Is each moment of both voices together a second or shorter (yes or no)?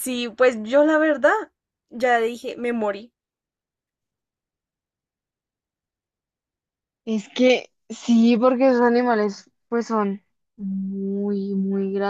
yes